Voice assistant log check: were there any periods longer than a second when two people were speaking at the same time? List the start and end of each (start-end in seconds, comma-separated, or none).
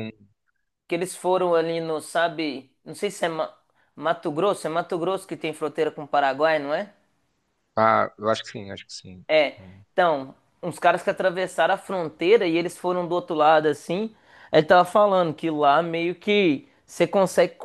none